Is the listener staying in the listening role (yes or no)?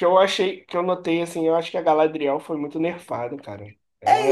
no